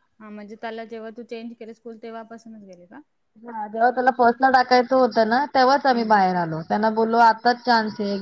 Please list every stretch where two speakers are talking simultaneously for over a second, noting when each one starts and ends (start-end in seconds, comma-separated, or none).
none